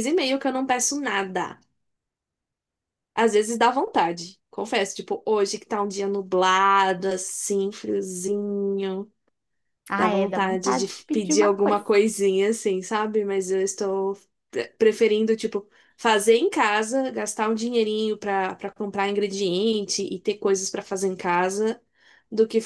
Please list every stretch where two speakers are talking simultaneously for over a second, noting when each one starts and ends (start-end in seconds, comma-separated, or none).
10.0-11.8